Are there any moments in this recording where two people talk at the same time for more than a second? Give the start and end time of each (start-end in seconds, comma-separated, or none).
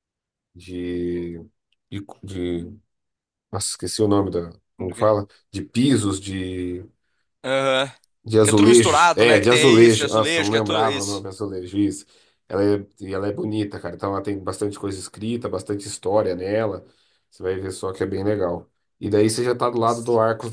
8.4-11.3